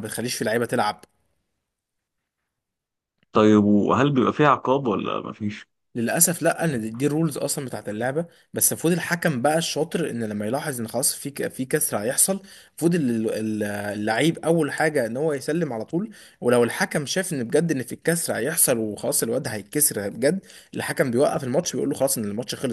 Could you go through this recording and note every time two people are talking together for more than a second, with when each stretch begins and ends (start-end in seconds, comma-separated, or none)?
none